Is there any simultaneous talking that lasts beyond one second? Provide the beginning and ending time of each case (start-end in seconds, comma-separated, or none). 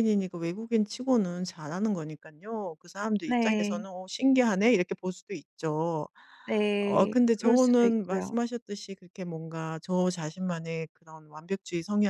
6.8-8.3